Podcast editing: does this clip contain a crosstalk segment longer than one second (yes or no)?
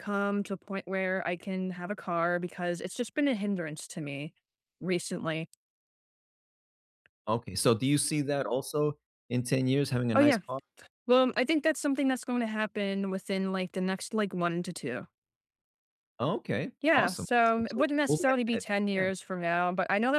yes